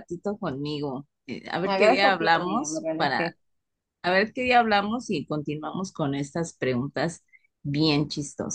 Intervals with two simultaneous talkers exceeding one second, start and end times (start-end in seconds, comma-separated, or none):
1.6-3.3